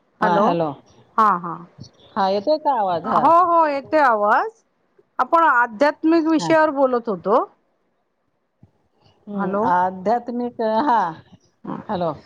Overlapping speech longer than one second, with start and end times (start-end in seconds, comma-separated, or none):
none